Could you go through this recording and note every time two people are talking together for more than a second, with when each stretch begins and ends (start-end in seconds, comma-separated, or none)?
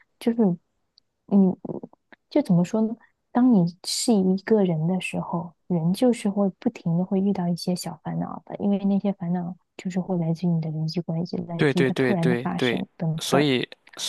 11.6-13.5